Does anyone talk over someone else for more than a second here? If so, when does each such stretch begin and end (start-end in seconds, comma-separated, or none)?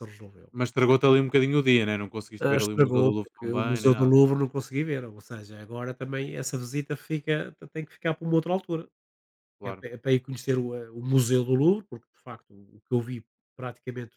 2.4-4.1